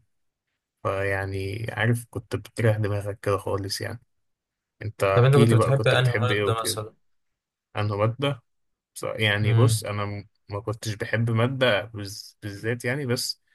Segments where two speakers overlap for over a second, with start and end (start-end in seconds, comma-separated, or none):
5.1-6.5